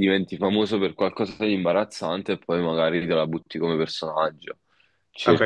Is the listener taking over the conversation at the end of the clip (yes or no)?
yes